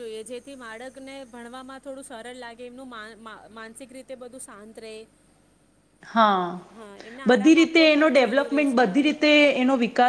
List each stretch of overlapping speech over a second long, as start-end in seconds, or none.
7.3-8.9